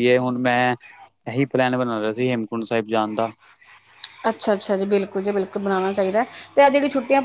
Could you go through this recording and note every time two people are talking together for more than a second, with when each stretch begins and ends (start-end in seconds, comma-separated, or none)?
none